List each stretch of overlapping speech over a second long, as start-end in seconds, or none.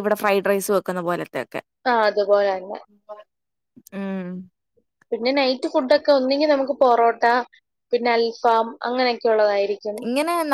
none